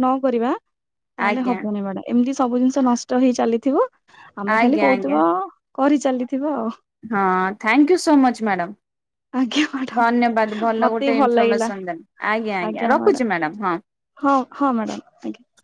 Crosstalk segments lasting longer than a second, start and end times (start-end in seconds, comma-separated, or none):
10.0-11.7